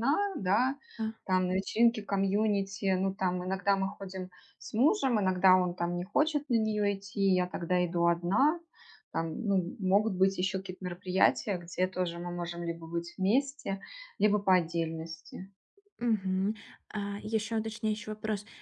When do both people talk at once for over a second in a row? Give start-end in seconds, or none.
none